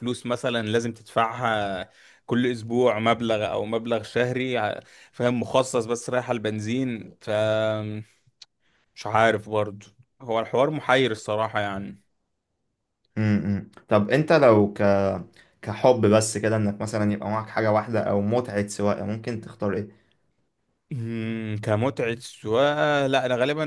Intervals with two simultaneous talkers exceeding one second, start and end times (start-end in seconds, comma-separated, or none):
none